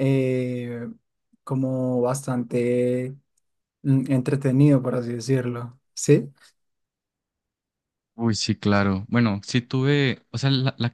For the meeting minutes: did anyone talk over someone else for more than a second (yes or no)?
no